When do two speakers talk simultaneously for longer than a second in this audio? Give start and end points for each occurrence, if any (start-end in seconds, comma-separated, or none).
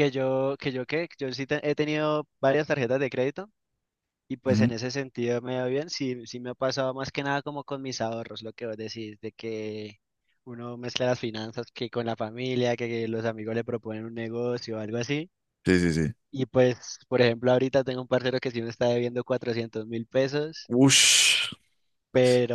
none